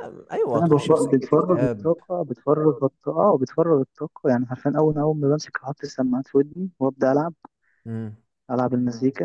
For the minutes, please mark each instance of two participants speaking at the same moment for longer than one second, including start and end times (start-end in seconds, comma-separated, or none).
0.5-1.9